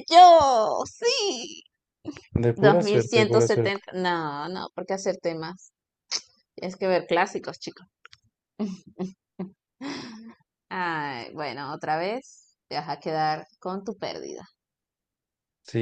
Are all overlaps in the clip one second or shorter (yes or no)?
no